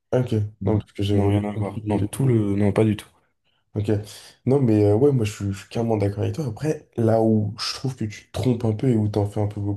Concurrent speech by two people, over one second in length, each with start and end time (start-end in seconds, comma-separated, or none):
0.6-2.4